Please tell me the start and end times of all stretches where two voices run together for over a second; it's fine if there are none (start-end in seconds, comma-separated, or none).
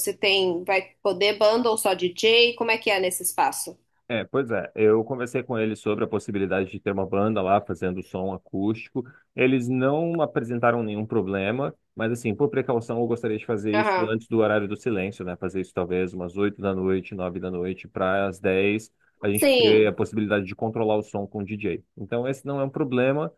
none